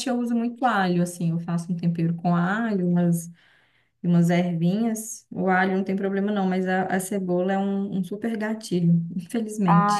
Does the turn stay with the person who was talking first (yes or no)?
no